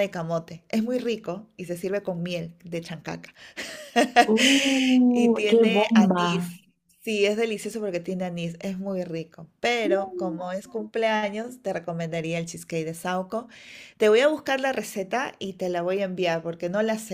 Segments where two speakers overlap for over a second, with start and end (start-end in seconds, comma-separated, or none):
5.1-6.6